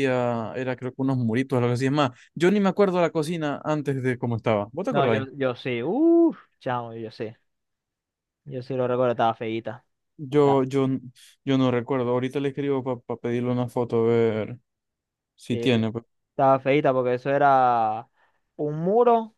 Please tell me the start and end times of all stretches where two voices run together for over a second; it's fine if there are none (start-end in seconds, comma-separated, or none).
none